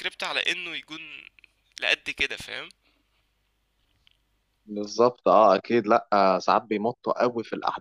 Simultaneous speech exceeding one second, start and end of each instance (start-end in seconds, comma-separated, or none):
none